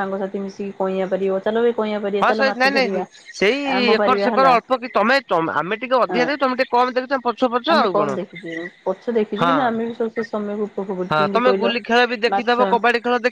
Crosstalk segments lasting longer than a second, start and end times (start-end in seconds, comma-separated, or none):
none